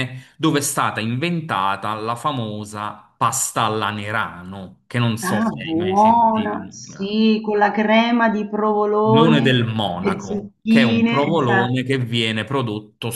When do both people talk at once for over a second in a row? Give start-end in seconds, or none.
5.2-7.2, 9.0-11.7